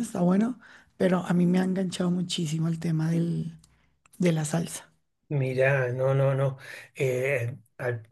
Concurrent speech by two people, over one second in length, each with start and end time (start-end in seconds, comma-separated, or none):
none